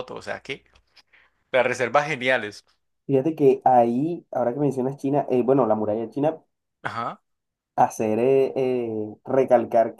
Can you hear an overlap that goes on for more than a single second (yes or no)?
no